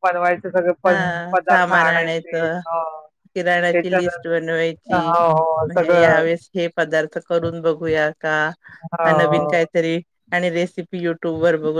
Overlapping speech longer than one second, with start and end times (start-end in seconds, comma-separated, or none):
0.8-2.6